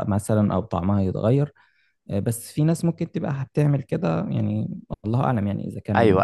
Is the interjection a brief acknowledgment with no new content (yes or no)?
no